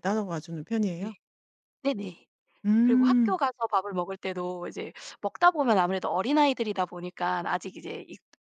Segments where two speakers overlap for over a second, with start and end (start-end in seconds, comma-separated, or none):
none